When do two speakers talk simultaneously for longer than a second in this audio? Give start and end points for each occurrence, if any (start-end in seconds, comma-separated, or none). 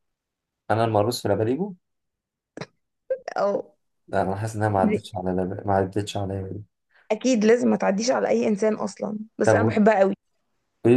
none